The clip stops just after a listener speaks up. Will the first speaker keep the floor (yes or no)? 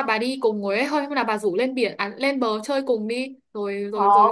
no